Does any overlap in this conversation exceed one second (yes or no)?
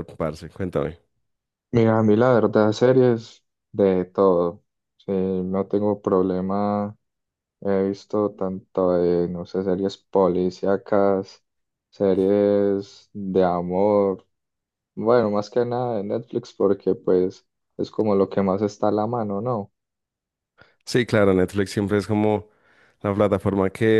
no